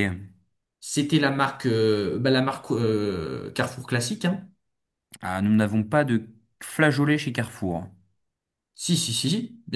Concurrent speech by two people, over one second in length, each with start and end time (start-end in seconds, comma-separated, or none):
none